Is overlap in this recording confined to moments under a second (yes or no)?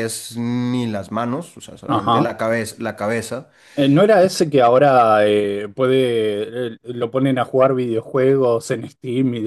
yes